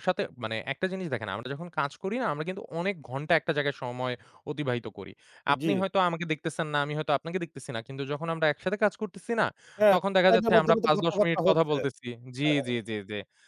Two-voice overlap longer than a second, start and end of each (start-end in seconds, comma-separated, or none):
9.9-11.8